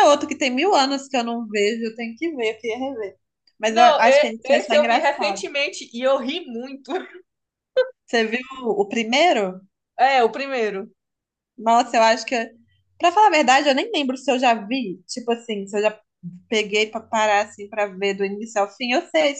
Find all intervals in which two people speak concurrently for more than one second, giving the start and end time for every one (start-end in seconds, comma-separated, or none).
3.7-5.5